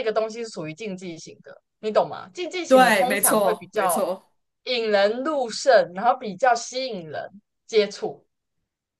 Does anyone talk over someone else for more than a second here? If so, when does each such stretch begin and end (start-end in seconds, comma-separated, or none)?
2.7-4.0